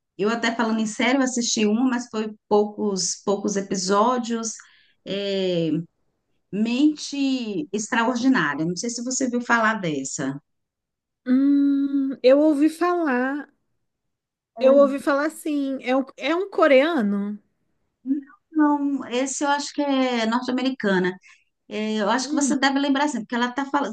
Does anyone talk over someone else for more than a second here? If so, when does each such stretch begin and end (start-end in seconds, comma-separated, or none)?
none